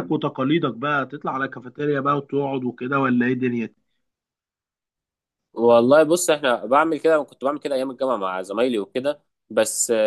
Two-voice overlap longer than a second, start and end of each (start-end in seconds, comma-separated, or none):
none